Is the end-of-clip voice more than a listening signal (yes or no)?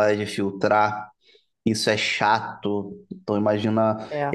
no